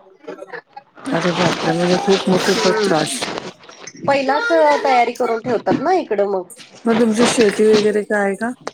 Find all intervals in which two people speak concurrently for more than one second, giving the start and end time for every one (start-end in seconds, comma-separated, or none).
none